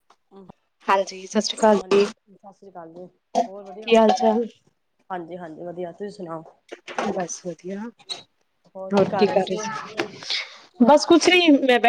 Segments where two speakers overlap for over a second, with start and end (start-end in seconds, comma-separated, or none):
none